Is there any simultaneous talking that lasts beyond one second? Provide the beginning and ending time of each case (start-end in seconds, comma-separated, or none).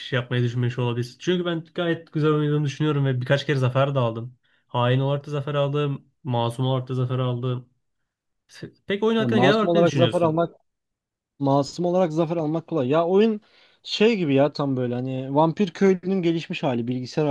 9.2-10.4